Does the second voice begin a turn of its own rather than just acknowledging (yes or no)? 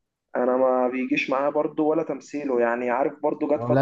no